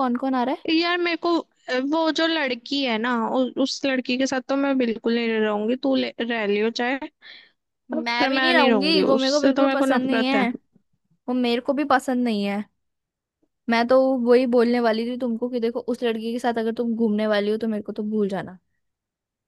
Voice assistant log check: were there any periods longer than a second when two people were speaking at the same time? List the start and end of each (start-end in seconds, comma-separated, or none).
8.1-10.5